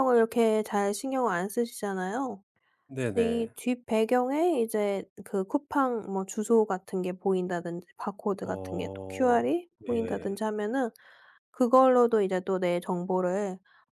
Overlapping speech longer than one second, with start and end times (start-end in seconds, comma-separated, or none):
8.4-10.3